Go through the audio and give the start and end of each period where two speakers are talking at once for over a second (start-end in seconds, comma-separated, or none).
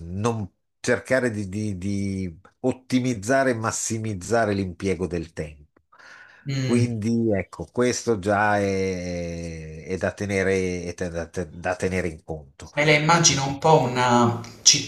none